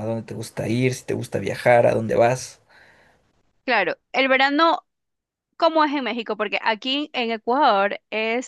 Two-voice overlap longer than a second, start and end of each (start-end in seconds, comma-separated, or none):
none